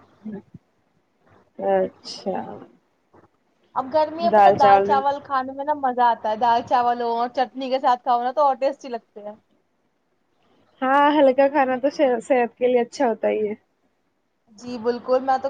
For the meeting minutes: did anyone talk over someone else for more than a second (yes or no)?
no